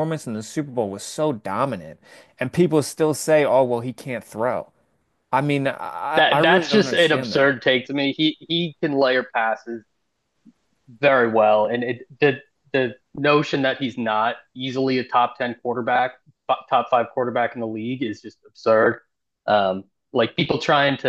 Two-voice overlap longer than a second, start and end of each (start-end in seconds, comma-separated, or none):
6.2-7.5